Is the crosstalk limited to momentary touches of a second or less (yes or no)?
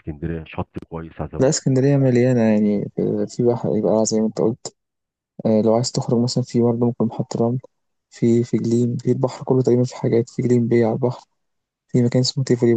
yes